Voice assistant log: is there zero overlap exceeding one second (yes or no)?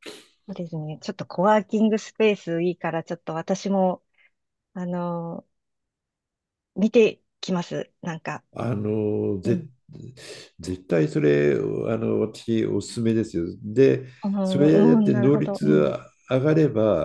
no